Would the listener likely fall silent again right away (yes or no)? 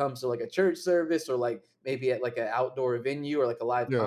yes